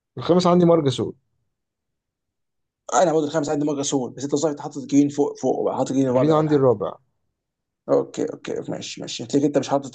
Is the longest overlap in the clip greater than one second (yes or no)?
no